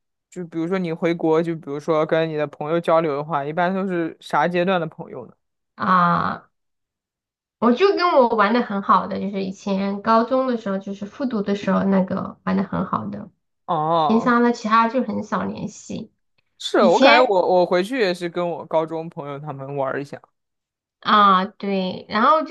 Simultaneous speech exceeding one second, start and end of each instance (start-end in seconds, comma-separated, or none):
none